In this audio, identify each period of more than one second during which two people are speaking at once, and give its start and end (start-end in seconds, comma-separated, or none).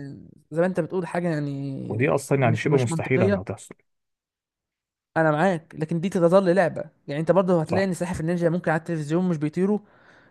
1.9-3.4